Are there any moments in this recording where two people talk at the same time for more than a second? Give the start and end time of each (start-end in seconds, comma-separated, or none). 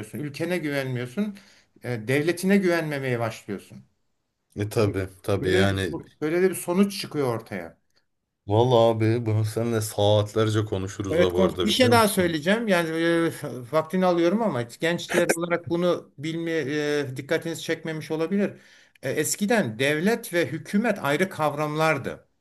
11.1-12.4